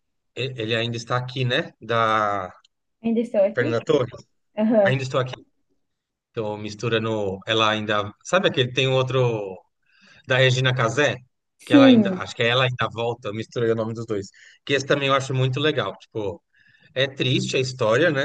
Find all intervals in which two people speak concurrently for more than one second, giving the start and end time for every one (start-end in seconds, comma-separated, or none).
none